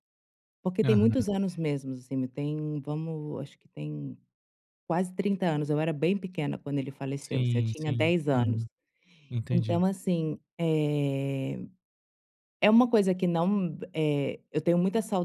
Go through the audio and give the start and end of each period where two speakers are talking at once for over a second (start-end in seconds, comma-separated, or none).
7.2-8.6